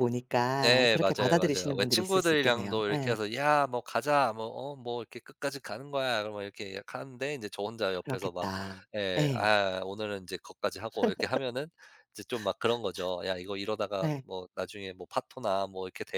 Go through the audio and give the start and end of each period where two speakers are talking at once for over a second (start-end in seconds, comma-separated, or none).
0.6-3.2